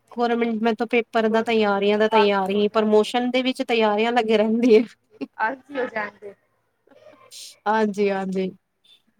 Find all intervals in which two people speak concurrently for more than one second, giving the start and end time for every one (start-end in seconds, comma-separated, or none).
1.3-3.1